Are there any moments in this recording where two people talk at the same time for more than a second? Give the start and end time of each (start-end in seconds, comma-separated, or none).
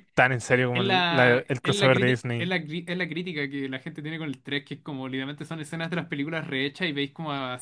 0.7-2.5